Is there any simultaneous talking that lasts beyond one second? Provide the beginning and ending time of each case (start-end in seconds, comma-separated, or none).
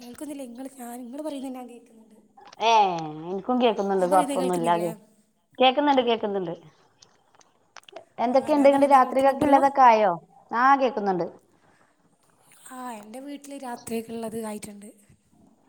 8.3-9.6